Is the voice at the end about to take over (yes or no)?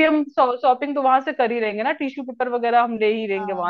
yes